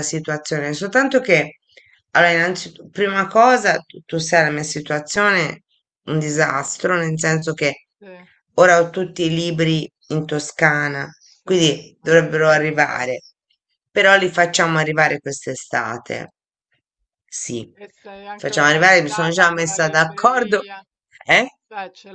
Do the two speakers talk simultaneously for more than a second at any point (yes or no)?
yes